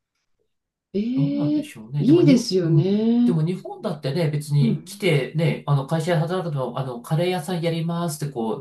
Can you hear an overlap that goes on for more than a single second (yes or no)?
yes